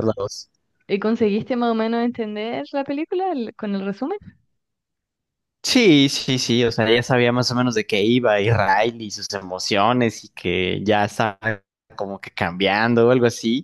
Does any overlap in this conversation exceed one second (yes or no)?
no